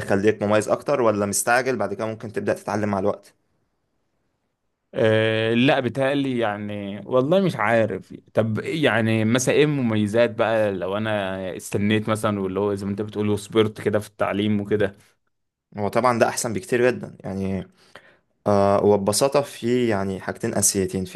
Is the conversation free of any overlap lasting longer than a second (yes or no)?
yes